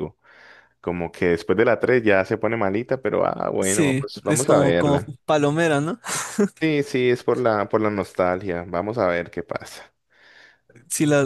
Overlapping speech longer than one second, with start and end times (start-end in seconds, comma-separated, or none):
3.6-5.1